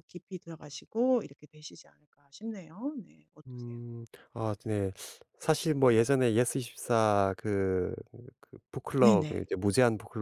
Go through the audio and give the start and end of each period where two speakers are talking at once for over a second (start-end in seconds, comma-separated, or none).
none